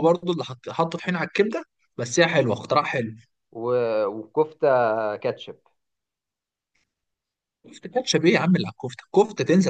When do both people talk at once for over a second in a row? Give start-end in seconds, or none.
none